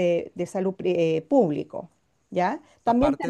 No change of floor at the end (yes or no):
no